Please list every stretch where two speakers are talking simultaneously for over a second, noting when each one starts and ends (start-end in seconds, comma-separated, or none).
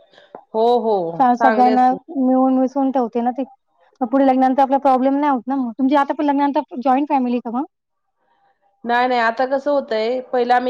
none